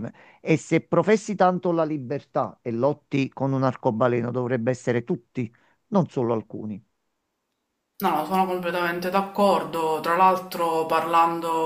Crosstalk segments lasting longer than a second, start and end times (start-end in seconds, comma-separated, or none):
none